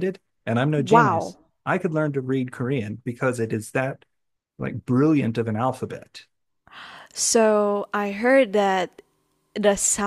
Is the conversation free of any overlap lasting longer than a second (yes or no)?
yes